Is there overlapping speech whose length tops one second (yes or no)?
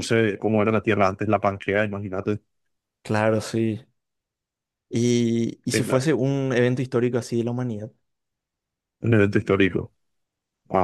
no